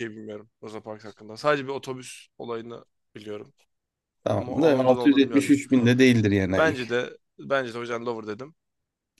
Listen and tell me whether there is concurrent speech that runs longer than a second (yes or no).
yes